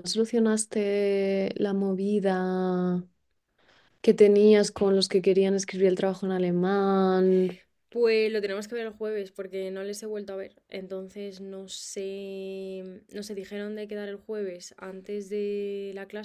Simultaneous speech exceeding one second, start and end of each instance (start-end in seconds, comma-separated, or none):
none